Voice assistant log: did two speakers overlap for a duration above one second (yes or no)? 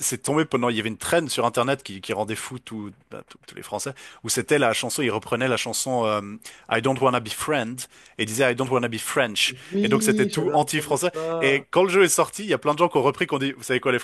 yes